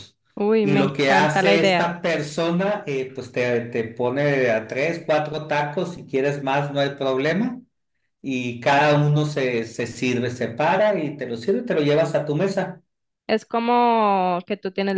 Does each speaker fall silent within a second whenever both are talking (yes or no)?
no